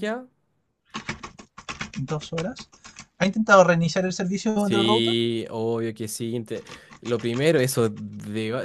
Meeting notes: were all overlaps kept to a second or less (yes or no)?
yes